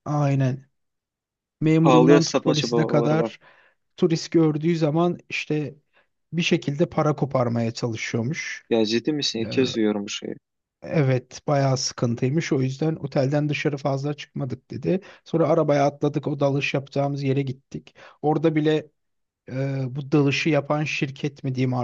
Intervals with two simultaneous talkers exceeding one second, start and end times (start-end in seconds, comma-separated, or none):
1.8-3.3